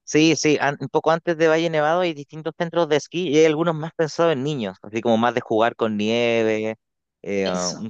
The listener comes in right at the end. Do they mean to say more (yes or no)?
no